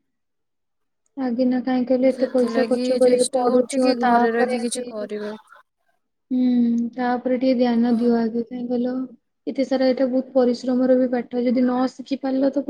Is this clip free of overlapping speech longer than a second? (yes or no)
no